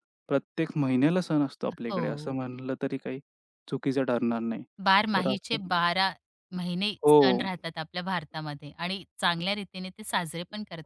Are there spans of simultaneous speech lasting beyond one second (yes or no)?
no